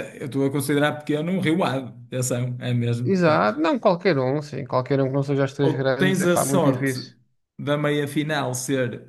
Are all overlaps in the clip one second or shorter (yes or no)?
no